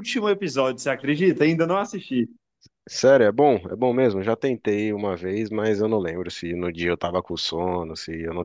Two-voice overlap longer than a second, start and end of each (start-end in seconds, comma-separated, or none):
none